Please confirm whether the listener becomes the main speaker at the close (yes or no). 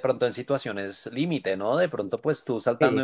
no